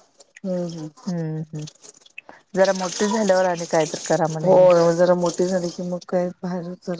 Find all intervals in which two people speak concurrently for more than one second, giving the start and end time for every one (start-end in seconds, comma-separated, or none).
none